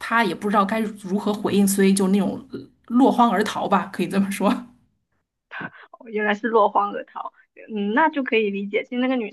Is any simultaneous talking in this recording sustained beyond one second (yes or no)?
no